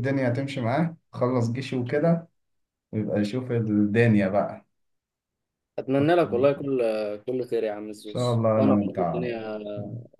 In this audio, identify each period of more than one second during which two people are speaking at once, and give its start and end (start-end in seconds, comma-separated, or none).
8.0-9.3